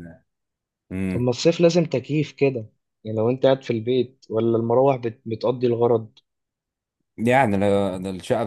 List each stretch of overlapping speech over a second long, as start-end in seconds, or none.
none